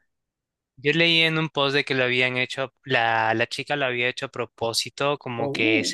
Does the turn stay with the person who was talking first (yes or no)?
yes